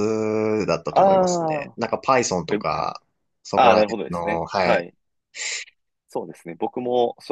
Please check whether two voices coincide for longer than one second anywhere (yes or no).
yes